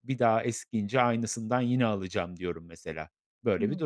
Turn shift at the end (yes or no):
yes